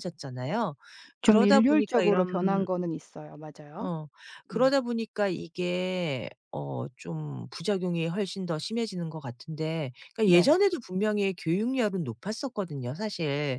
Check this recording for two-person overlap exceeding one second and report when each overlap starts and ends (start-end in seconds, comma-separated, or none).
1.2-2.7